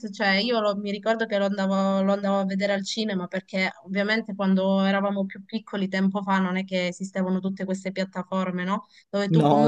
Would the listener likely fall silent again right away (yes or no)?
yes